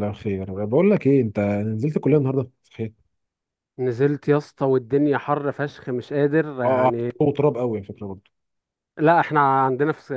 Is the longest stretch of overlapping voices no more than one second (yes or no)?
yes